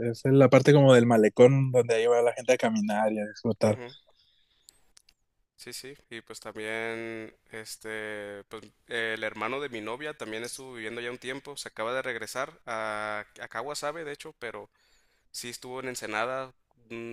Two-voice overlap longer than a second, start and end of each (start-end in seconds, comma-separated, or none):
none